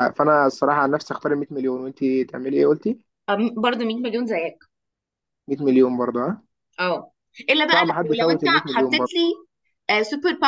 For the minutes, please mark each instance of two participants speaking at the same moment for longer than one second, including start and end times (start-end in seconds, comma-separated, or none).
7.7-9.1